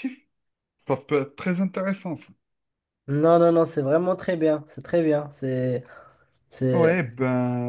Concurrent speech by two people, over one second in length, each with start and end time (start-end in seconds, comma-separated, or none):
none